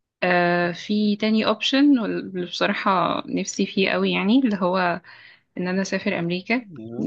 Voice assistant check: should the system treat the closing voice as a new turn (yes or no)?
no